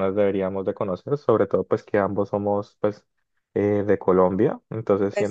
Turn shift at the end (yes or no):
no